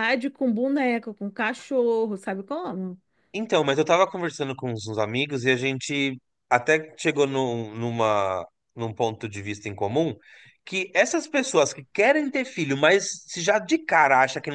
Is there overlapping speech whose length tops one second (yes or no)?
no